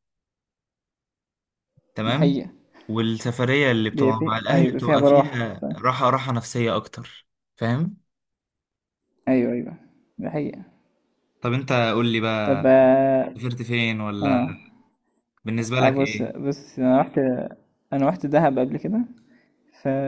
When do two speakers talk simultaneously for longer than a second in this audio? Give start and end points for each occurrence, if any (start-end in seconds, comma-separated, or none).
3.9-5.8